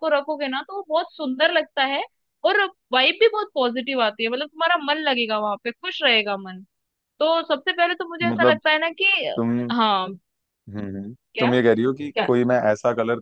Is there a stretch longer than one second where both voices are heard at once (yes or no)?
no